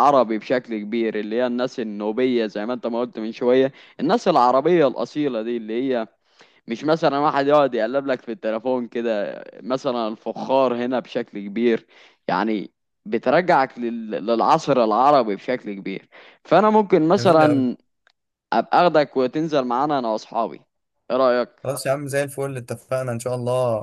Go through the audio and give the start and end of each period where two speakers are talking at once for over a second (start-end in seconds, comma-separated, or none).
none